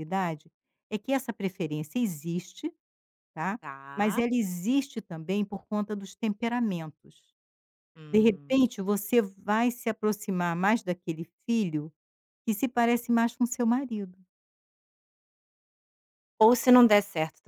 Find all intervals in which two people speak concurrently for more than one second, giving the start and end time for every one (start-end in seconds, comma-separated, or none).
none